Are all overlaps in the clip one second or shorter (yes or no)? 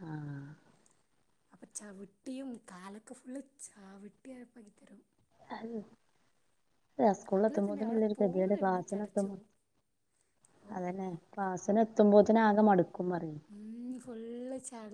no